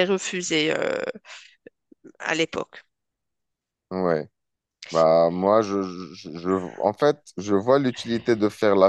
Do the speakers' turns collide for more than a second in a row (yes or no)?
no